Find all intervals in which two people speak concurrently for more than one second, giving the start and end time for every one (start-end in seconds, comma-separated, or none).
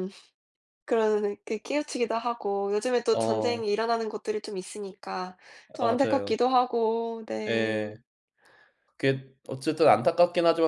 none